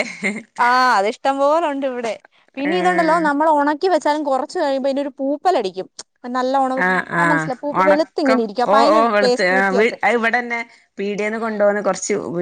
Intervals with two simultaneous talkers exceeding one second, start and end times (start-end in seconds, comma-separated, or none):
7.3-10.0